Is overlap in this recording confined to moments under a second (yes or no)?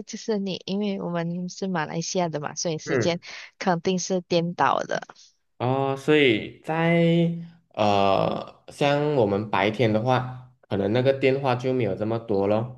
yes